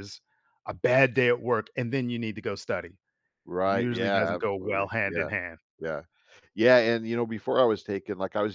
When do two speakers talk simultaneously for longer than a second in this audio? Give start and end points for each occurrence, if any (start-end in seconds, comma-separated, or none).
3.6-5.3